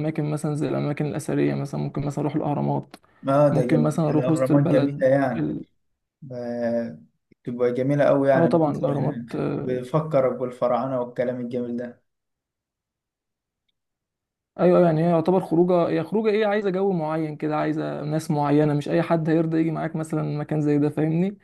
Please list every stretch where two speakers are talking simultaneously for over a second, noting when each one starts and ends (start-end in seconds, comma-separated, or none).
3.5-5.5, 8.3-9.8